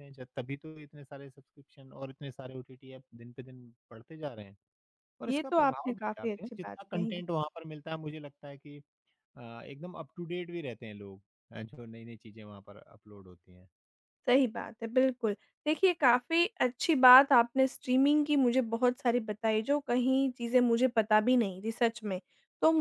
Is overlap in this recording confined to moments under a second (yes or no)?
no